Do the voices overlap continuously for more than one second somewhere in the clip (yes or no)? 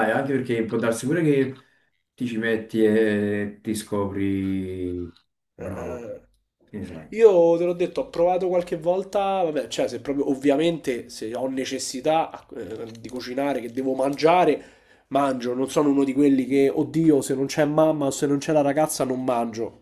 no